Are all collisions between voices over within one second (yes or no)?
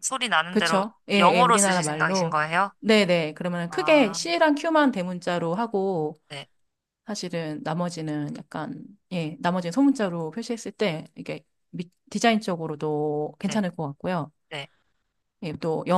no